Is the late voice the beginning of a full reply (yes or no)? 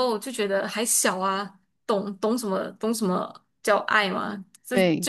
no